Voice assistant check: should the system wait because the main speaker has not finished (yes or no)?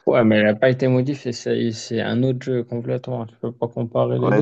no